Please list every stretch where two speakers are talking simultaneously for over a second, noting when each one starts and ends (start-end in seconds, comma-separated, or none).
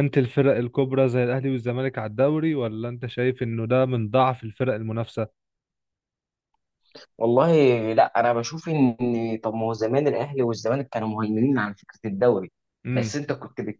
none